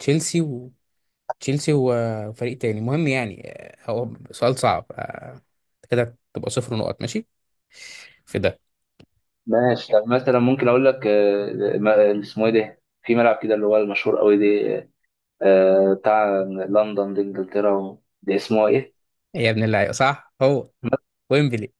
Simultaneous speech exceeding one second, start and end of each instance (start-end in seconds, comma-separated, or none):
none